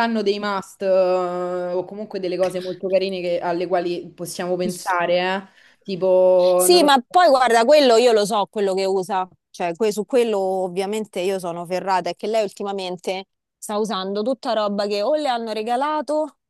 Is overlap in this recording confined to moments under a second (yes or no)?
yes